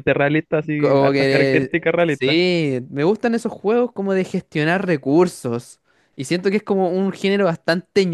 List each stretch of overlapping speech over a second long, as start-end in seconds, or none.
0.8-2.4